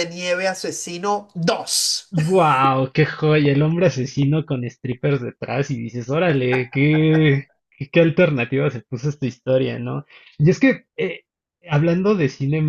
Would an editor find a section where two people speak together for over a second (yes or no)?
no